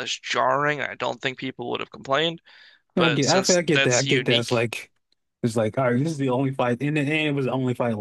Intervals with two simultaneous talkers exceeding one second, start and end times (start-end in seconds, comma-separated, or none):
3.0-4.6